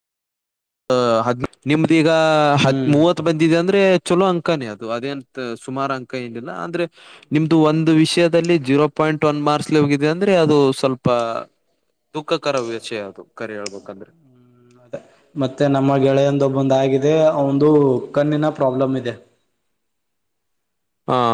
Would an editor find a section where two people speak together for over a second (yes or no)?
no